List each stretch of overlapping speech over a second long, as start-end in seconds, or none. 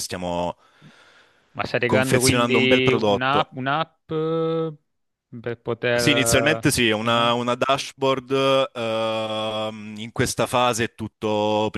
1.9-3.5, 6.0-7.3